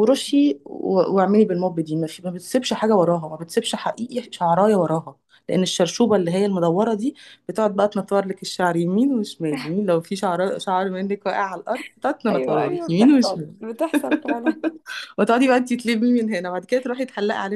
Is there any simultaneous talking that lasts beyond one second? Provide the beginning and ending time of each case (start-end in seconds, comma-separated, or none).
12.3-13.5